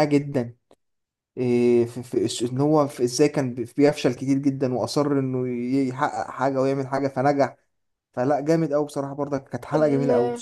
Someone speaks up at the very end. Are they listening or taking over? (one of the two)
taking over